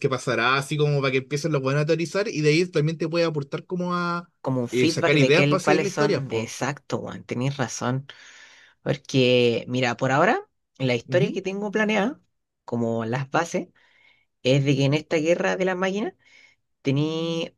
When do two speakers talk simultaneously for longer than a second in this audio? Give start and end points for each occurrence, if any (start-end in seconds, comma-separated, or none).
4.7-6.5